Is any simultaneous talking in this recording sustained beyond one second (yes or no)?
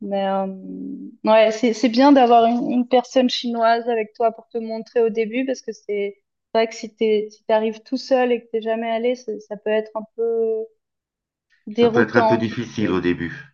yes